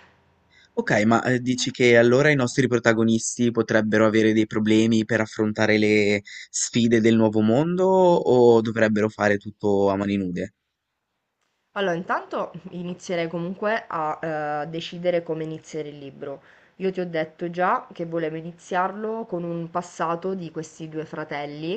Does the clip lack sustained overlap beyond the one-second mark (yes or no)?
yes